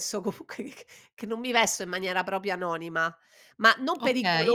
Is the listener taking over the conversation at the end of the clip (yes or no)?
no